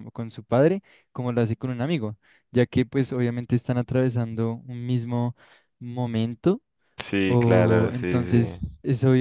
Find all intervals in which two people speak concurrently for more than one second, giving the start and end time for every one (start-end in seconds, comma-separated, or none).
7.2-8.6